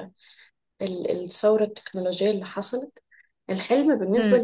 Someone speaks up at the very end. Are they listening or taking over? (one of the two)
listening